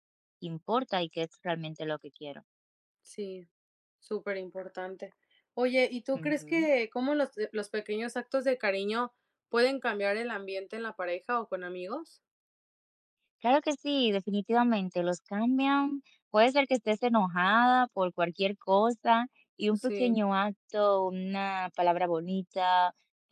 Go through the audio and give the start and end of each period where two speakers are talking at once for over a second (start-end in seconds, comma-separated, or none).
none